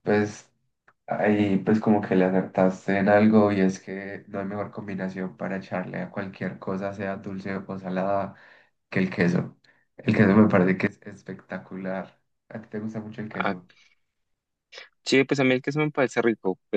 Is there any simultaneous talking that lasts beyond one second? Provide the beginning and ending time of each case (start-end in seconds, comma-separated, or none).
none